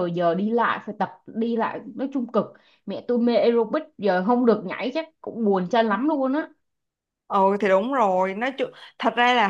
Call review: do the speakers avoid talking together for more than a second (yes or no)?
yes